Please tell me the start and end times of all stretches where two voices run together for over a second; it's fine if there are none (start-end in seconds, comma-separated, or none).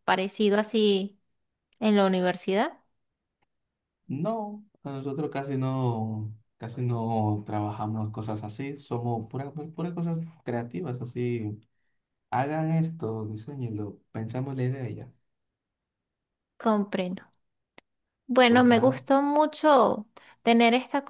none